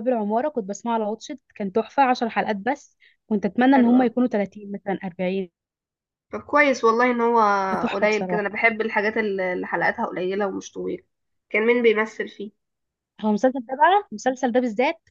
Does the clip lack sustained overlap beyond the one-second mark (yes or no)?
yes